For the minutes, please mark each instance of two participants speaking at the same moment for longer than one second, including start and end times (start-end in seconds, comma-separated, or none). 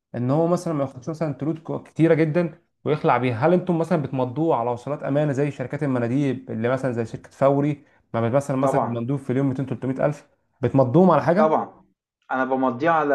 none